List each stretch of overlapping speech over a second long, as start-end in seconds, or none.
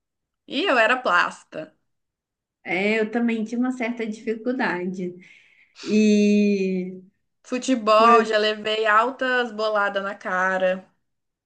none